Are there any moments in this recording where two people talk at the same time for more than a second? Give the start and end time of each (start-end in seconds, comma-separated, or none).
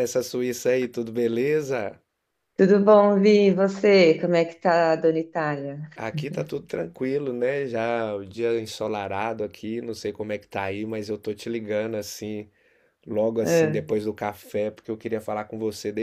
none